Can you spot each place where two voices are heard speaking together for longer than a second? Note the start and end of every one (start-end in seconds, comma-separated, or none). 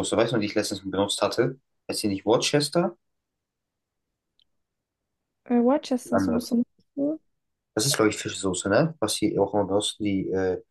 none